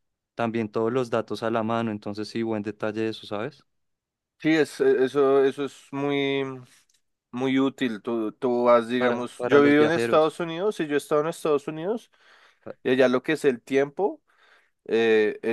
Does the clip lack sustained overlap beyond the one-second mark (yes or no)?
no